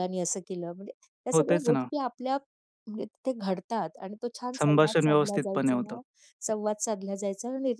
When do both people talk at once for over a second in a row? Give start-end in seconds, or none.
4.6-6.0